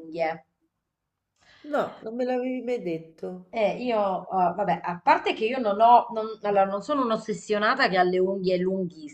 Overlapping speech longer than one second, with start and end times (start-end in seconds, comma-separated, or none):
none